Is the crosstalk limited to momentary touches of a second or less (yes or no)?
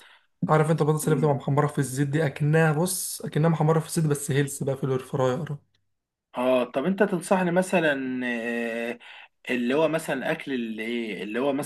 yes